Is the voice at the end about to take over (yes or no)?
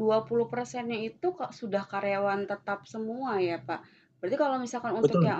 no